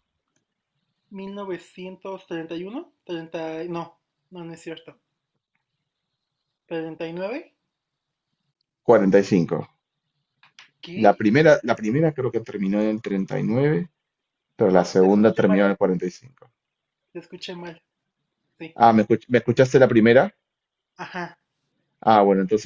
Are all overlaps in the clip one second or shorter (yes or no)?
no